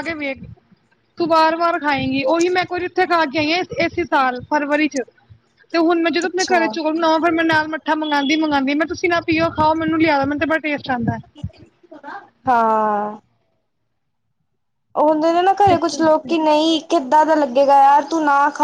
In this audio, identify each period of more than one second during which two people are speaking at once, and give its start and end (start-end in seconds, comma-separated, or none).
none